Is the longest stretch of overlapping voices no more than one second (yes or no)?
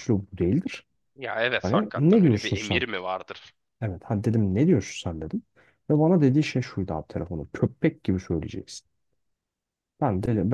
no